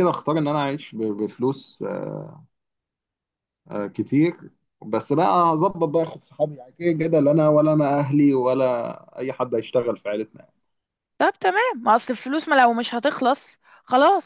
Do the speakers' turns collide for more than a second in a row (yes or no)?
no